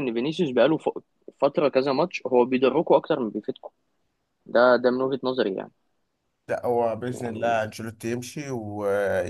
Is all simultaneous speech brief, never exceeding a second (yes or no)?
yes